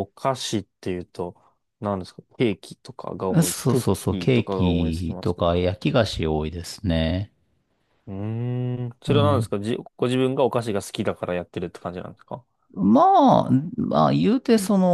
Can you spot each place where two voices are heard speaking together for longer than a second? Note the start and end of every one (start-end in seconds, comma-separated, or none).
3.4-5.5